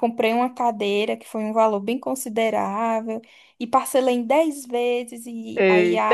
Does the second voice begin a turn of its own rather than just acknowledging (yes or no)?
yes